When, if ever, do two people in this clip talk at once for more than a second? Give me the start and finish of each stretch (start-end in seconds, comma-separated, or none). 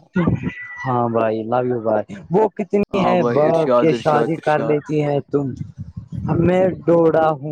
2.9-4.8